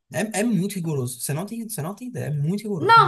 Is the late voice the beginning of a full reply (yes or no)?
yes